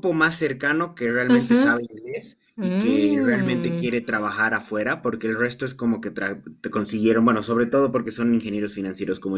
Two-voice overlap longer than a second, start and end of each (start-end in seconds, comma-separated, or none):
2.6-3.9